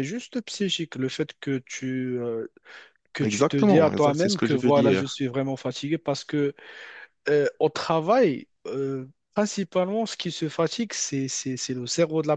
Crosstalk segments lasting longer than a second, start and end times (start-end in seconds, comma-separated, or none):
3.2-5.2